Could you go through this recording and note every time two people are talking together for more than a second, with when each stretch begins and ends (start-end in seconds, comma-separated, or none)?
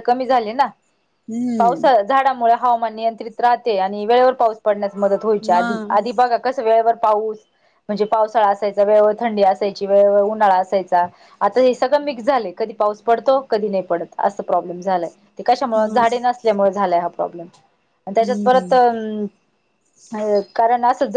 none